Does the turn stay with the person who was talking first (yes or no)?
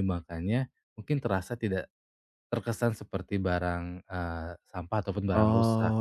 no